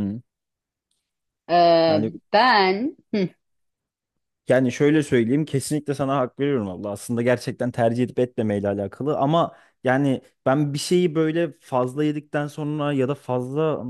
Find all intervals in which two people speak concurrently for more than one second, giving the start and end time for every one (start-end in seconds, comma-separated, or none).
none